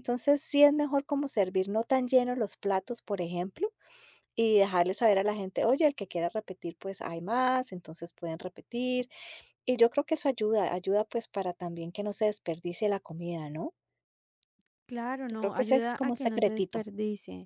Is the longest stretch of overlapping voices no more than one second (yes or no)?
no